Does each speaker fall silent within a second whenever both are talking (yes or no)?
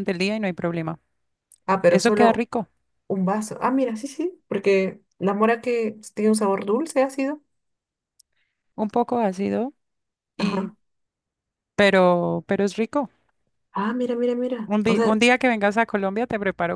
yes